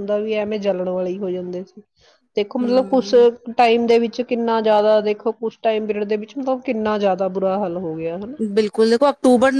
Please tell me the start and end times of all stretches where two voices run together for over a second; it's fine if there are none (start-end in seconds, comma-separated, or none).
none